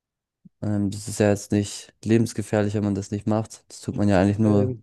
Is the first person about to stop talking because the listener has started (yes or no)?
no